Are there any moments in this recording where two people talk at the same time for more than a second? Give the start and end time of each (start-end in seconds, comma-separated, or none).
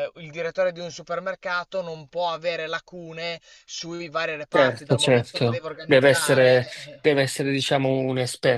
4.5-7.0